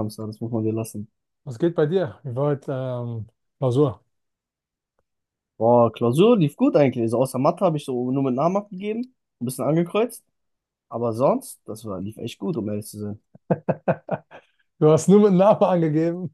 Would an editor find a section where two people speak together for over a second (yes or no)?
no